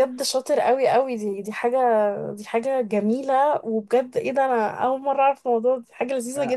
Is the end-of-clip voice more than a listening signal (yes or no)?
yes